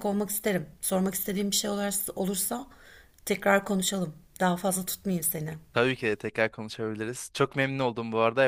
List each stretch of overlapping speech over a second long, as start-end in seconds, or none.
none